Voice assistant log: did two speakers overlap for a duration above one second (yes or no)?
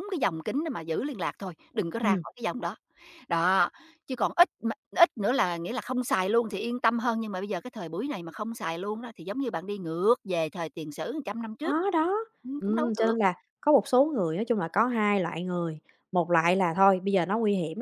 no